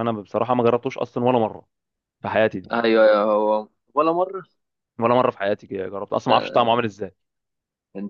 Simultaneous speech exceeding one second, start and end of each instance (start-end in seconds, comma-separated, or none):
none